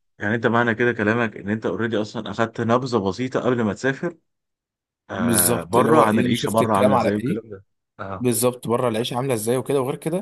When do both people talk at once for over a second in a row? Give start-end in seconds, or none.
5.1-7.4